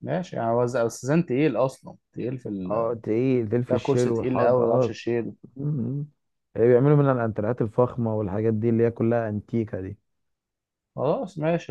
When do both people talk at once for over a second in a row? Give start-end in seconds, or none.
3.7-5.0